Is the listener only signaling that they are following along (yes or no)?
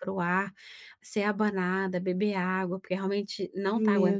no